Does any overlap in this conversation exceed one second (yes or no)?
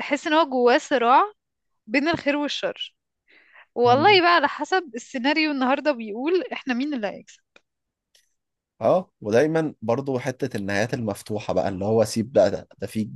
no